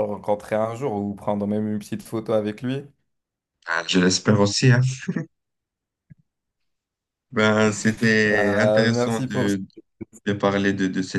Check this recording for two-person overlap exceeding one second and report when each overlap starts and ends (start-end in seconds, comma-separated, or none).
8.3-9.6